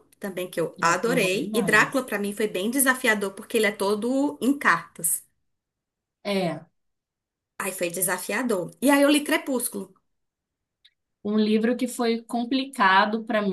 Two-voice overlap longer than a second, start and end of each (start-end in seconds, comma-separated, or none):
0.8-2.1